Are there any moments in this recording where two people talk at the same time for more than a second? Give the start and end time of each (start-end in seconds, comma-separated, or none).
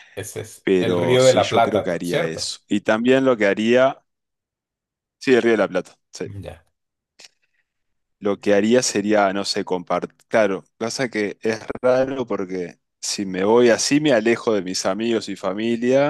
0.6-2.6